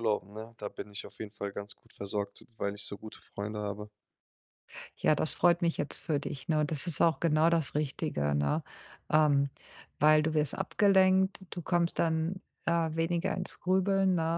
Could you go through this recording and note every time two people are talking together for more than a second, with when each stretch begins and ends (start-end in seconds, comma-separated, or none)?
none